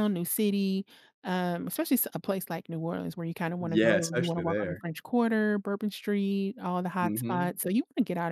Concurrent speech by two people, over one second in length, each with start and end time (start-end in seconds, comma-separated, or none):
3.6-4.8